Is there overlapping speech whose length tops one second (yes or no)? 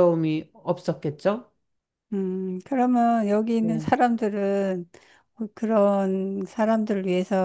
no